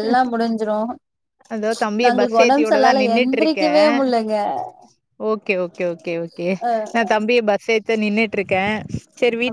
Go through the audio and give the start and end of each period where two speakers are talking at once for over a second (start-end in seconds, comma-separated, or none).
2.0-3.9